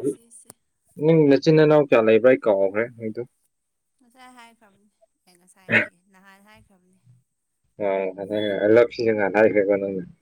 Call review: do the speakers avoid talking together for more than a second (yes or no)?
yes